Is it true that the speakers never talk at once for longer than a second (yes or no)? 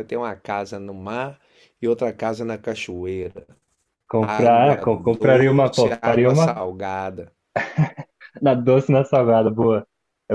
no